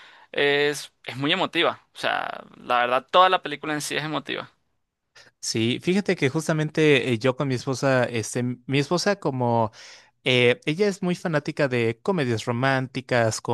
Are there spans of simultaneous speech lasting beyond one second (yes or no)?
no